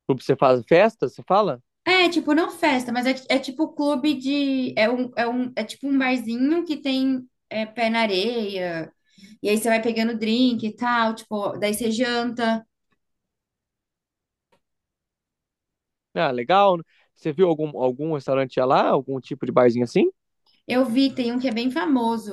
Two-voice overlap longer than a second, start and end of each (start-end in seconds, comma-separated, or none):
none